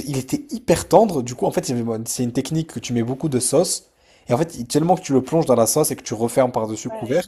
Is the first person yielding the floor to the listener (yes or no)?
no